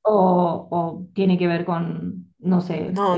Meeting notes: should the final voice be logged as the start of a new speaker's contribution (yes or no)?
yes